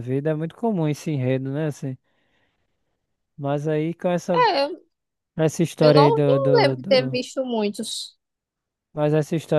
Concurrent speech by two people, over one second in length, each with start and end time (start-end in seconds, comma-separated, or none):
5.8-7.2